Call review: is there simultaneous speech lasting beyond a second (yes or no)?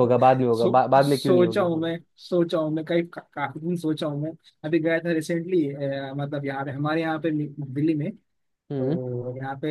yes